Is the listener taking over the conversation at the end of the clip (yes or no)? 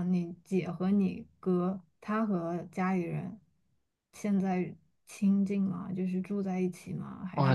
yes